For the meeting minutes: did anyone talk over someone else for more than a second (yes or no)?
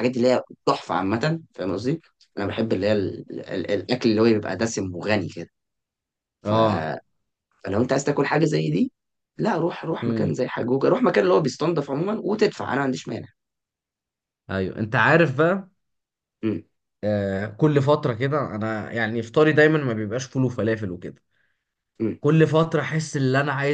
no